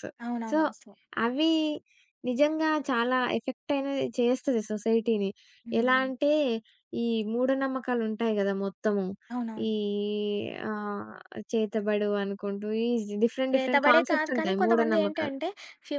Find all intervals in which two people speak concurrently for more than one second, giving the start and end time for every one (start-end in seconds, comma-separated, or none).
13.5-15.3